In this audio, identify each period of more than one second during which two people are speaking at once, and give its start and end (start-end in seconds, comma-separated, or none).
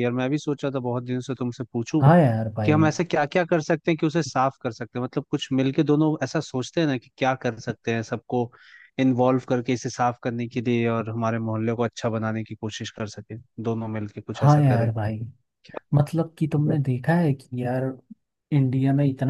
none